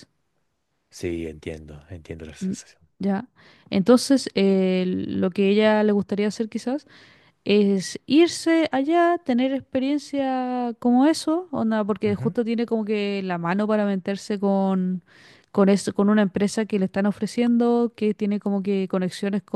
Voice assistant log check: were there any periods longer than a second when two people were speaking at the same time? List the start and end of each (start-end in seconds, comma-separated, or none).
none